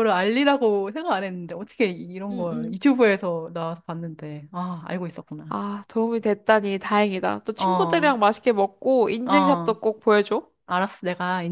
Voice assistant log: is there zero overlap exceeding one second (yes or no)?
yes